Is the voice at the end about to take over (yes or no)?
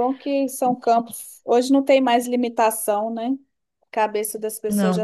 no